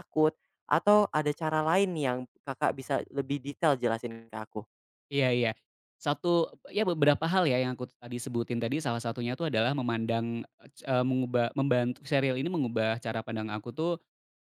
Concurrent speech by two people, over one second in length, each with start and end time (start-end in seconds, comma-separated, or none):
none